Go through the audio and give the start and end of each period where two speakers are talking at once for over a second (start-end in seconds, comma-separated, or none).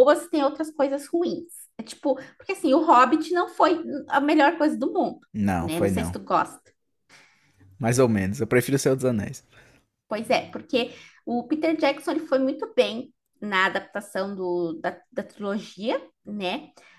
none